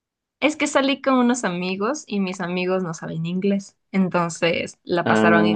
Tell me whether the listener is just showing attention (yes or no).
yes